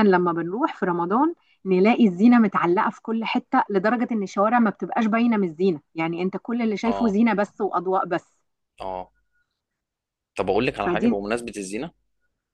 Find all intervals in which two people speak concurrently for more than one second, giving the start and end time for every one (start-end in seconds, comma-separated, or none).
none